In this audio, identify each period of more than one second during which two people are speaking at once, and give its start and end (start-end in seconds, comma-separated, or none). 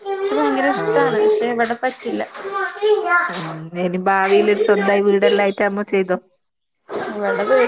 none